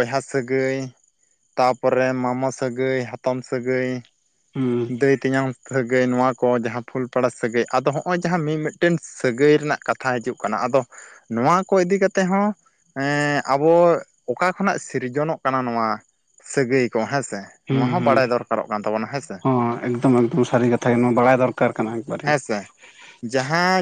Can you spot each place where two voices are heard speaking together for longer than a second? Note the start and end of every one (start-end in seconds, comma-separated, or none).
none